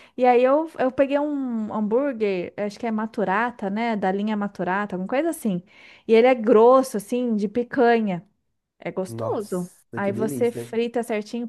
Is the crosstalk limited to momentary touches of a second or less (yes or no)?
no